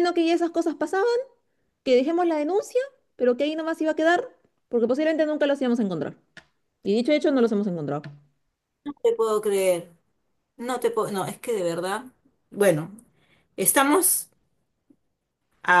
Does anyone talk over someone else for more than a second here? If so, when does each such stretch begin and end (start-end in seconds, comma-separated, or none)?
none